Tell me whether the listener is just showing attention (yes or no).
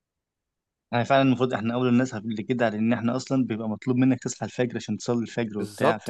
no